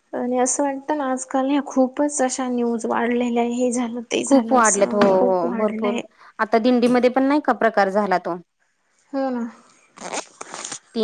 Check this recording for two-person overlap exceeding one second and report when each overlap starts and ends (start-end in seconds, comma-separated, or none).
4.3-6.0